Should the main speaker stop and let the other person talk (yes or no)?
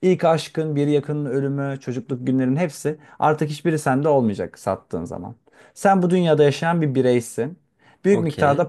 no